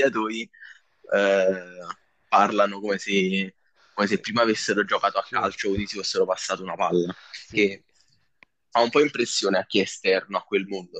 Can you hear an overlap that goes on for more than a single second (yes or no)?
yes